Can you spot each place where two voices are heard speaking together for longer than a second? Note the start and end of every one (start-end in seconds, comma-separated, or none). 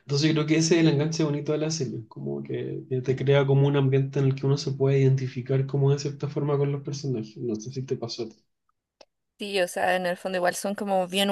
none